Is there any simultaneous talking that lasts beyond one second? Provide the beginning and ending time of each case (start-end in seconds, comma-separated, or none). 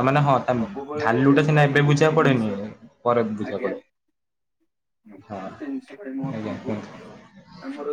0.6-2.4